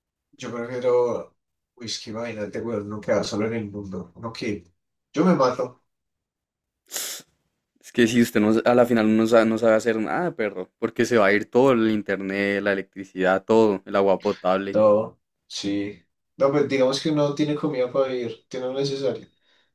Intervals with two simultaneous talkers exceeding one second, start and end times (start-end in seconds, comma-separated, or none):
none